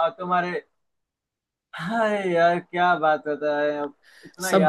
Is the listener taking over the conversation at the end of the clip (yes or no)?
yes